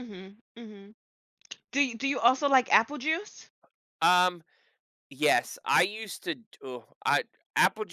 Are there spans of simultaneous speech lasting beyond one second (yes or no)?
no